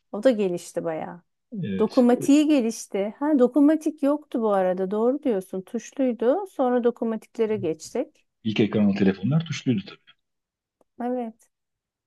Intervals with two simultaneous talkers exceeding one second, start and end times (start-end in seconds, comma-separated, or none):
none